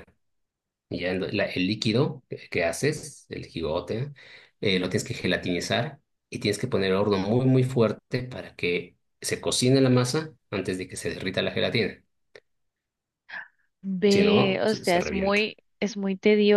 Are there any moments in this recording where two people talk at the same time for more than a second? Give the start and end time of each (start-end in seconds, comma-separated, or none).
14.1-15.4